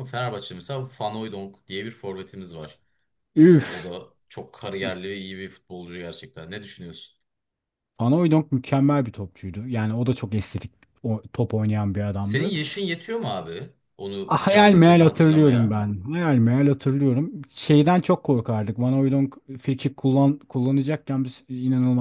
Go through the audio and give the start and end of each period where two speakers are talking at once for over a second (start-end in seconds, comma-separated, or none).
14.3-15.8